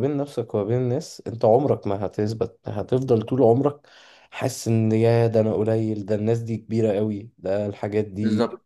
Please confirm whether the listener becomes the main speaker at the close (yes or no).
yes